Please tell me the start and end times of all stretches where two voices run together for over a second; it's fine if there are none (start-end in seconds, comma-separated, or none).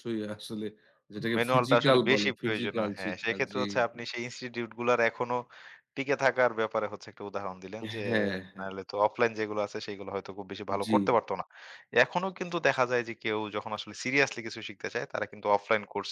1.4-4.0